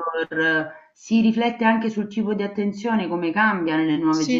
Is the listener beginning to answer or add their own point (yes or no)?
yes